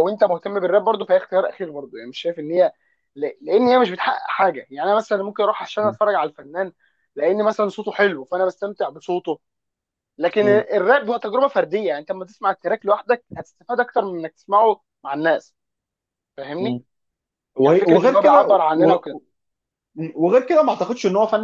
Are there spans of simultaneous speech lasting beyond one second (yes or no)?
yes